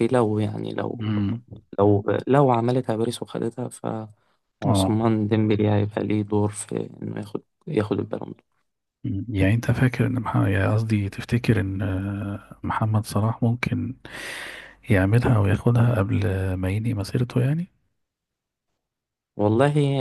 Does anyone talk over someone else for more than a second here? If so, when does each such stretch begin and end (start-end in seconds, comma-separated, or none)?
none